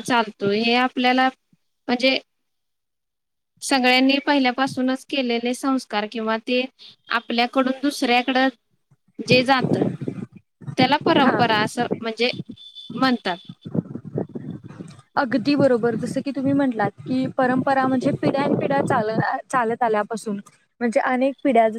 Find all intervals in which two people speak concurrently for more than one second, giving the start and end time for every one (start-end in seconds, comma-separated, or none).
none